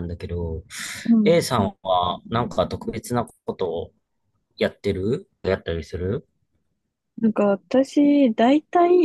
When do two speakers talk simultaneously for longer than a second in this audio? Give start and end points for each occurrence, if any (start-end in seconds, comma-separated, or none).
none